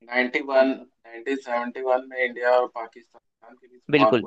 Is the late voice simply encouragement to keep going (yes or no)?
no